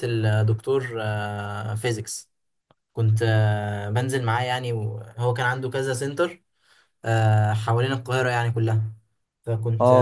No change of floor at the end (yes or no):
no